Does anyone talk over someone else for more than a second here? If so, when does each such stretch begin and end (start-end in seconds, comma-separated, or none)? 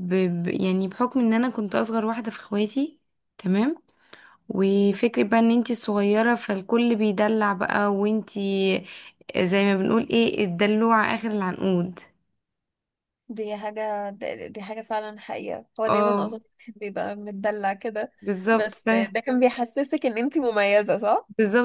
none